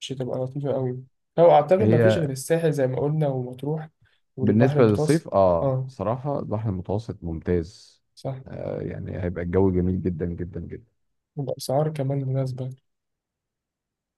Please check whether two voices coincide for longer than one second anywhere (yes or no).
yes